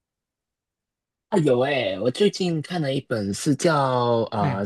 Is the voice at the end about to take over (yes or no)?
no